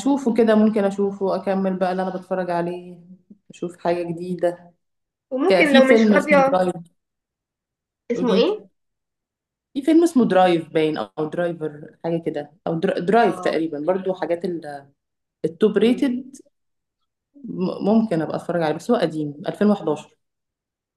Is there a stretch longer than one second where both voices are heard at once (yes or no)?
yes